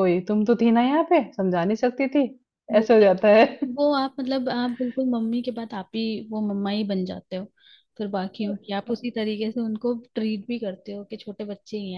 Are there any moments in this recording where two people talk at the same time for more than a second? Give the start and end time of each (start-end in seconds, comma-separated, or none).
none